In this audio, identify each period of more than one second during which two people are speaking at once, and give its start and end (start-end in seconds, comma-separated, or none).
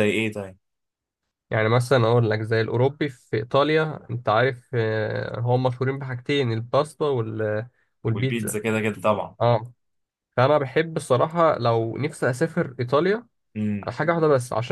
none